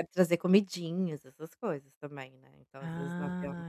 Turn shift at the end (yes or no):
yes